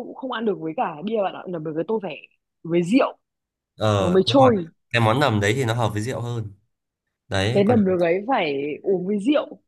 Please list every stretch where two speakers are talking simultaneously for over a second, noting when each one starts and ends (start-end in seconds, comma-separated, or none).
none